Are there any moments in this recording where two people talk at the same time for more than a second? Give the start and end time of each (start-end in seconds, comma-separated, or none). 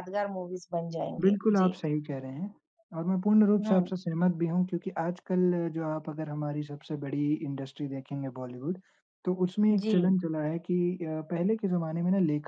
none